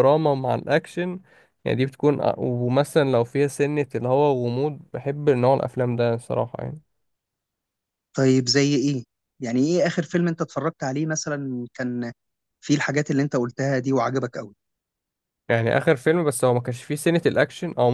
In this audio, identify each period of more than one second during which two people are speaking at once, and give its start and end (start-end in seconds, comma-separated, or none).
none